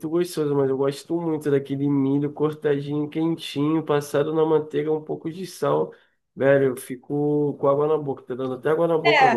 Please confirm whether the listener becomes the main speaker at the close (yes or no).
yes